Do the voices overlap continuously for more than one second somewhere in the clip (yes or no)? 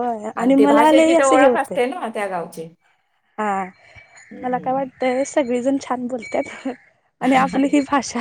yes